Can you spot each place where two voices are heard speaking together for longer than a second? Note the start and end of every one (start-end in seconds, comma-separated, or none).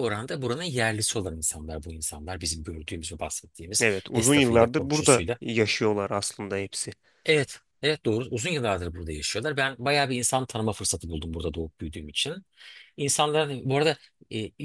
3.8-5.4